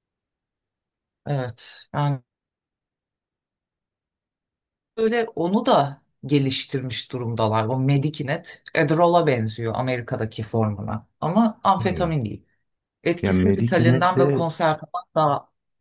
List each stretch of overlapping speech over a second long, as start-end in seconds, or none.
13.2-14.5